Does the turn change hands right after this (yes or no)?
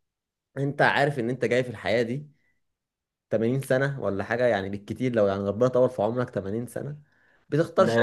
yes